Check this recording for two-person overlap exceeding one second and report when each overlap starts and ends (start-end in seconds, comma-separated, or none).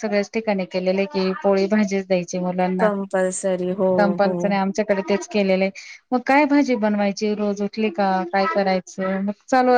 none